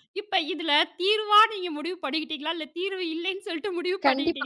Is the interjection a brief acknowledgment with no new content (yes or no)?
no